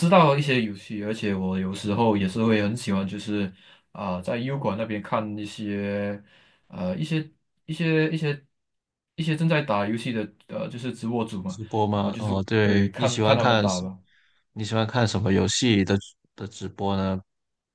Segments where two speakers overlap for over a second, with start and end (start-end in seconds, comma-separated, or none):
11.5-13.8